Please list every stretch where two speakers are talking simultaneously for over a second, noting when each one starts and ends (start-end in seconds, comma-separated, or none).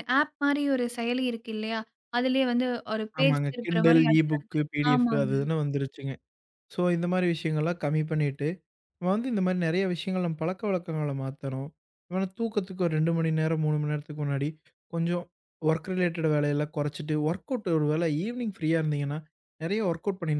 3.2-5.3